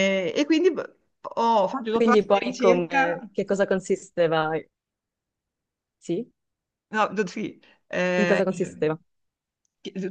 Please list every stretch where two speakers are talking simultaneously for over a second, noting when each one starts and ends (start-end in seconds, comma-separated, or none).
1.9-3.2